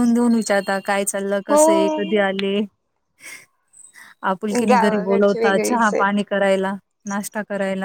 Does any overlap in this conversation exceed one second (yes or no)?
yes